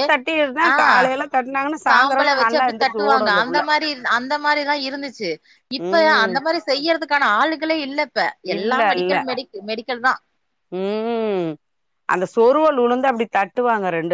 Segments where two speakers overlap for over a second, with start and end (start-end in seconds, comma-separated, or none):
1.9-3.6